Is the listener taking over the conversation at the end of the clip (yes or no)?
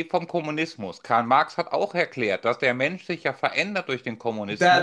yes